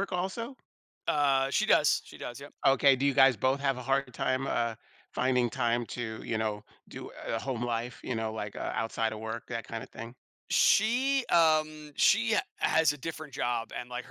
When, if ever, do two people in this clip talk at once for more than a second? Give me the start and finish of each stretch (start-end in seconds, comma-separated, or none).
none